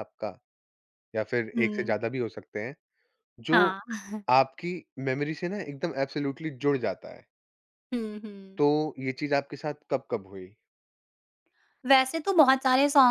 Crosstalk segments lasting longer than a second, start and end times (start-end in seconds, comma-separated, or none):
none